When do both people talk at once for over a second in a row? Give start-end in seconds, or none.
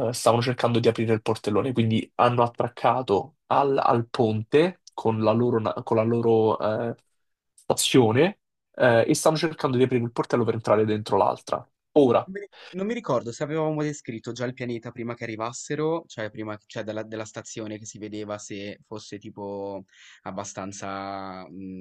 none